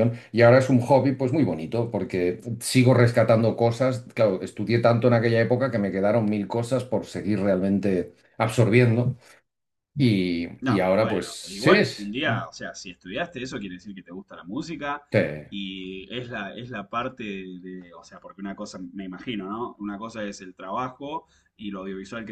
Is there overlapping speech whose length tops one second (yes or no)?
yes